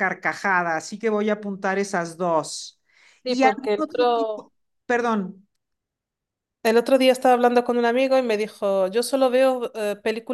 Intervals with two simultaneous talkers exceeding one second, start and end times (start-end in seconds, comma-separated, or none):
3.3-4.5